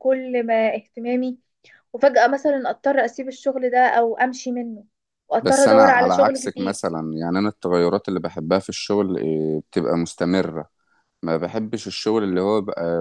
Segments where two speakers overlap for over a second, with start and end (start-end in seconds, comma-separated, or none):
5.4-6.8